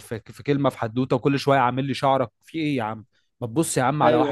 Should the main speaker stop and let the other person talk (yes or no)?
yes